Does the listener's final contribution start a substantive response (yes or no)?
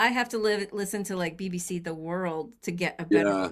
no